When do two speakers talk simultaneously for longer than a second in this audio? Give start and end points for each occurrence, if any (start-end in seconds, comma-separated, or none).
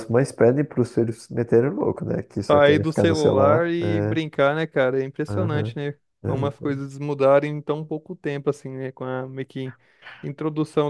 2.5-4.2